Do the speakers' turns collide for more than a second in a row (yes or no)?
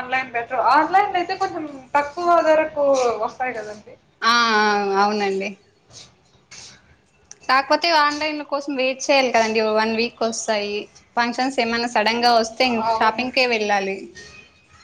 no